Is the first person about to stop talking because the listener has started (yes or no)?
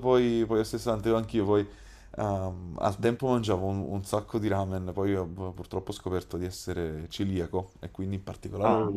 no